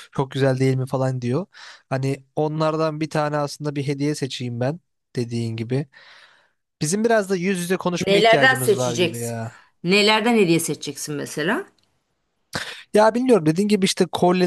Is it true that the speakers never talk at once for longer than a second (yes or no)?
no